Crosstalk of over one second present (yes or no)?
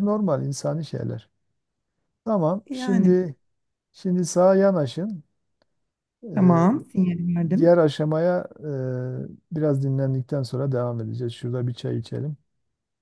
no